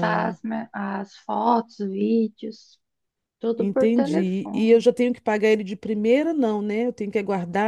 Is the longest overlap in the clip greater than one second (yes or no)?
yes